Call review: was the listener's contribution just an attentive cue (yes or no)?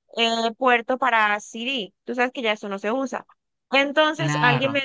yes